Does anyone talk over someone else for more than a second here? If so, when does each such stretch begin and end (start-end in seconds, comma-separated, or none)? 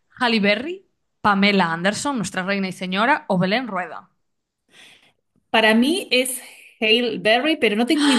none